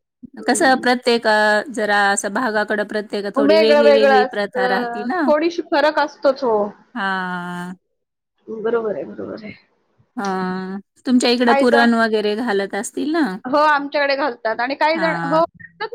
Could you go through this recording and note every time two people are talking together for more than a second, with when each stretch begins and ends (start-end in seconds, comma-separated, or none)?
3.5-5.2